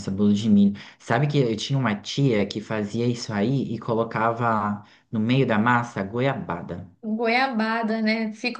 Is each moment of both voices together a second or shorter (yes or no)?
yes